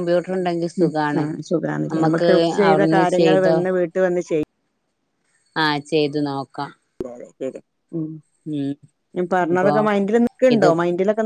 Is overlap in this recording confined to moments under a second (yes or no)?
yes